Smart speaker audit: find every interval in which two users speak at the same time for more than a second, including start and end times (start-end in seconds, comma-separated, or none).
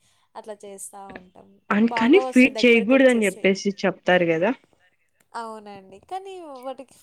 1.9-3.5